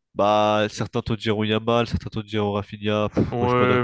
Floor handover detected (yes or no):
yes